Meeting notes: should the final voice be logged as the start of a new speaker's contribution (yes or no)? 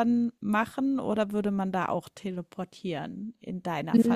yes